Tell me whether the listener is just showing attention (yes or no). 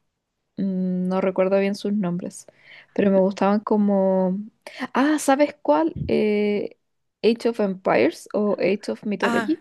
no